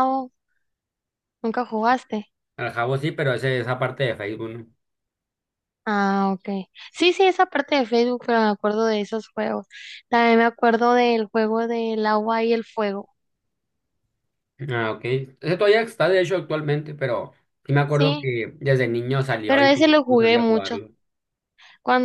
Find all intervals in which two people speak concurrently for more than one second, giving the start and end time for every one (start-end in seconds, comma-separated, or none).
19.5-20.8